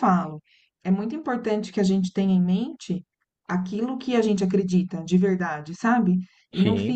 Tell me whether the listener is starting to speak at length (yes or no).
no